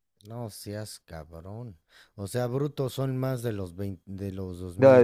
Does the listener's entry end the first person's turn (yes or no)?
yes